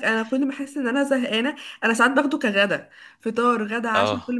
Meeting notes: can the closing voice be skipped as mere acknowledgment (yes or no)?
yes